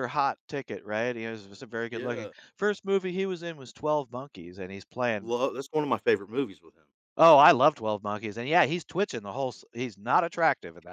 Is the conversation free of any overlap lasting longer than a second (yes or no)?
yes